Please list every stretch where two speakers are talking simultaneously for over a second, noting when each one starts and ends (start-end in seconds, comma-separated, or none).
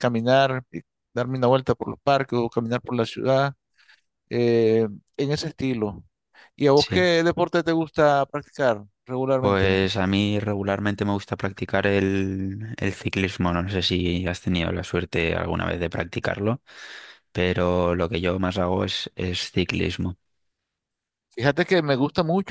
none